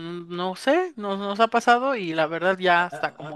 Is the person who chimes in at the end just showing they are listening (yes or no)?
no